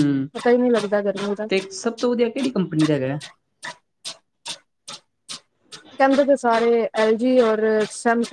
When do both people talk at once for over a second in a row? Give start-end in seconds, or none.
none